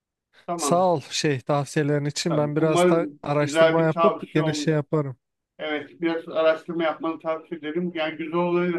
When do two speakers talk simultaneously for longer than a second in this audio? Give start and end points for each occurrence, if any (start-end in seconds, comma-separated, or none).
2.3-4.7